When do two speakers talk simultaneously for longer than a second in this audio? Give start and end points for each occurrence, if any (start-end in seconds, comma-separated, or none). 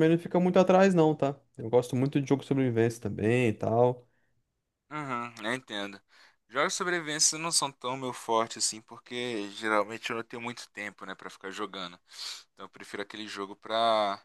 none